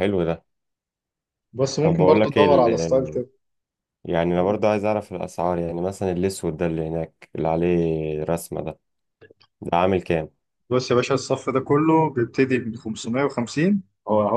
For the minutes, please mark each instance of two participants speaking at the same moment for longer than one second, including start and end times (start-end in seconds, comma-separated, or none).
1.8-3.2